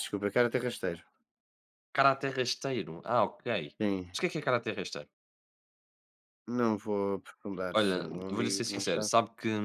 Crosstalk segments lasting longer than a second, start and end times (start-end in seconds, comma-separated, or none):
7.8-9.1